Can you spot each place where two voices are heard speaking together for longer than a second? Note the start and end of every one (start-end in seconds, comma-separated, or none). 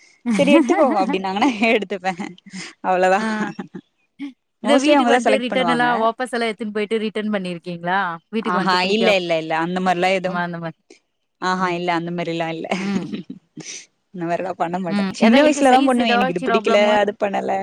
15.0-16.9